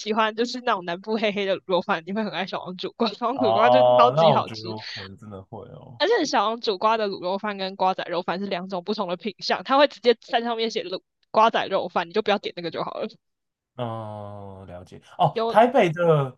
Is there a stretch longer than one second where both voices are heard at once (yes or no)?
yes